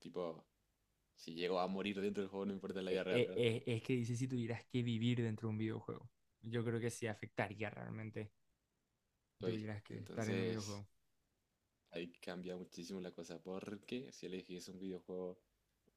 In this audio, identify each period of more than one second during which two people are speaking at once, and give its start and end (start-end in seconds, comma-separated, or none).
9.4-10.8